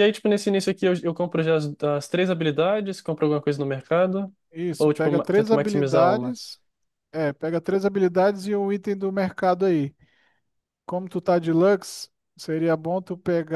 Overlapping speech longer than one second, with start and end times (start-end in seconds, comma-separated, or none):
4.8-6.4